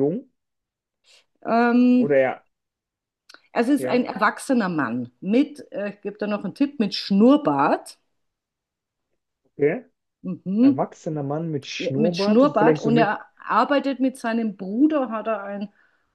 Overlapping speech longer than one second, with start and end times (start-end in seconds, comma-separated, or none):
11.8-13.2